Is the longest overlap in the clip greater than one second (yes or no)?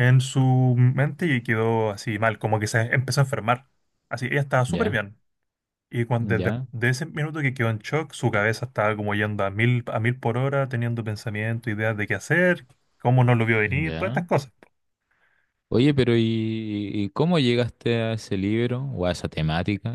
no